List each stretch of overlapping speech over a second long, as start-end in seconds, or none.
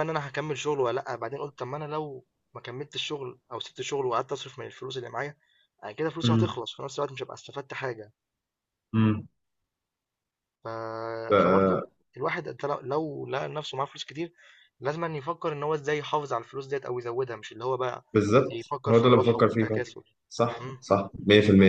18.5-19.8